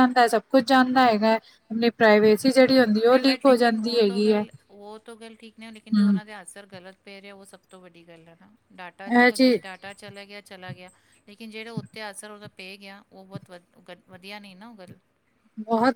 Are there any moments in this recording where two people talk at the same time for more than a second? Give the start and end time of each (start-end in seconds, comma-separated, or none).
3.1-4.5